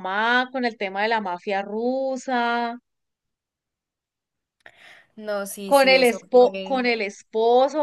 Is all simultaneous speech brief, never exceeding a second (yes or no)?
no